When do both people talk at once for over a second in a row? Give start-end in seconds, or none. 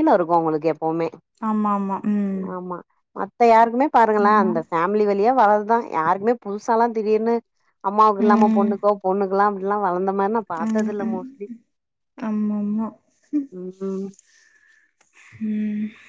none